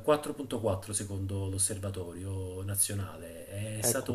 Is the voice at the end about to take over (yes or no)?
no